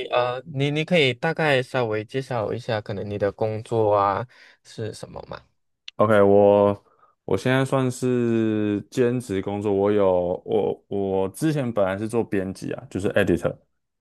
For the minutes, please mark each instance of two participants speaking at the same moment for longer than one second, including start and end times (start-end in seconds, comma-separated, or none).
none